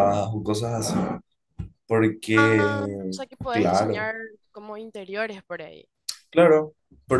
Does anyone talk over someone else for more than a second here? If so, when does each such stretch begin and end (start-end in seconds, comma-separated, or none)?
2.3-4.1